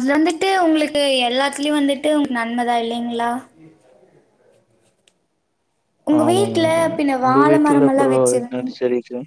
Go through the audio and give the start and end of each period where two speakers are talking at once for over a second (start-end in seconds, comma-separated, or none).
6.3-8.8